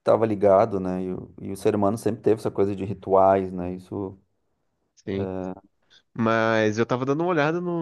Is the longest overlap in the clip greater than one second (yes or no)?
no